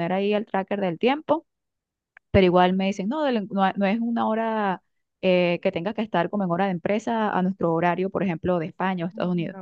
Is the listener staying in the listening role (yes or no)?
yes